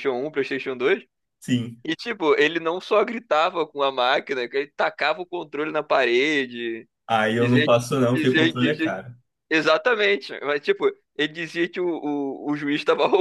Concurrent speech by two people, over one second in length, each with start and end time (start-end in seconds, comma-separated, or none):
7.4-8.9